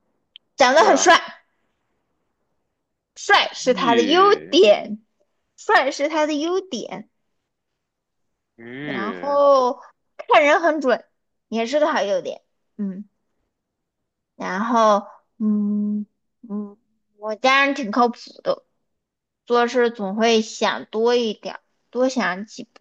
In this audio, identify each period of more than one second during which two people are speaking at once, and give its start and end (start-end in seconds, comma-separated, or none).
3.4-4.6